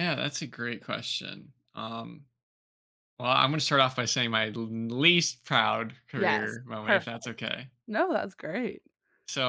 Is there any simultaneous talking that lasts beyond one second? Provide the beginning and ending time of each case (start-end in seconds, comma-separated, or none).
6.2-7.5